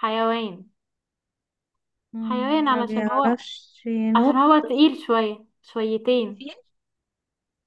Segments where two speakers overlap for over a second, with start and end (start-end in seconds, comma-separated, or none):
2.2-3.4